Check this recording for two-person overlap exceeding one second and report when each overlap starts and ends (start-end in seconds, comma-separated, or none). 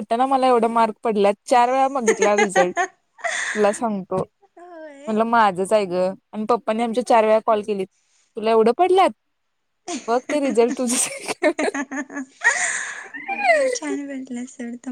none